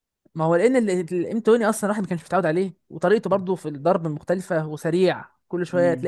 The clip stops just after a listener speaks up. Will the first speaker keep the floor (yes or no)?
yes